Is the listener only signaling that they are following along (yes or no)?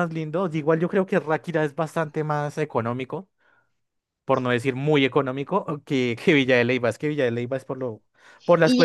no